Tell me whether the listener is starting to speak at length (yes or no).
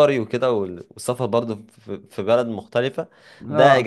no